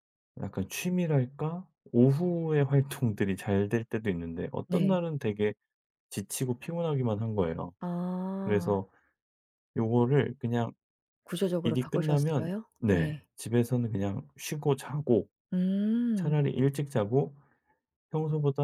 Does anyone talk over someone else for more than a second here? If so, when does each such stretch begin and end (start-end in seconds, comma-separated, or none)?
11.6-13.3